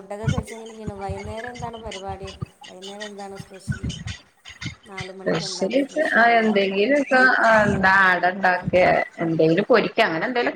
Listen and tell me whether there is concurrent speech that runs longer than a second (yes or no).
yes